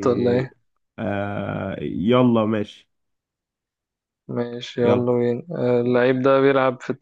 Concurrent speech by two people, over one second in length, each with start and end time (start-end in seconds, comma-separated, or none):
none